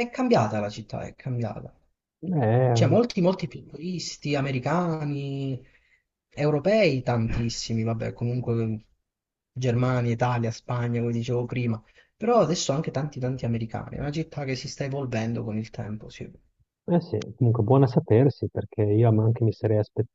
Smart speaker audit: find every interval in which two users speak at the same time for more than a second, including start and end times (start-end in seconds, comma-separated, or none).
none